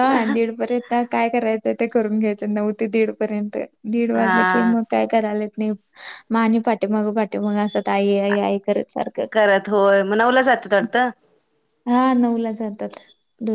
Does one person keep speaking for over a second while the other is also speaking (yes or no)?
no